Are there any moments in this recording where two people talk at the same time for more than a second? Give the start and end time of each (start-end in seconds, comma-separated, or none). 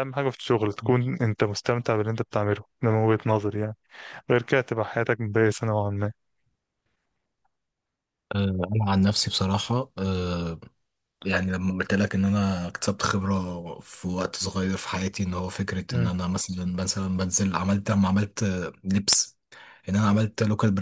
none